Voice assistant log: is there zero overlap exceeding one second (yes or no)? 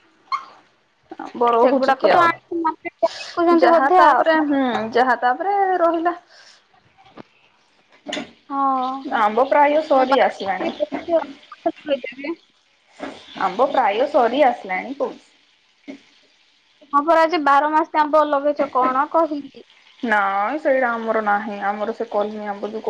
no